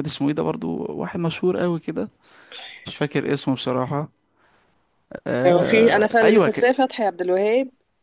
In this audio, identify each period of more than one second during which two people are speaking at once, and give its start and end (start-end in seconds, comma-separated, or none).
5.5-6.7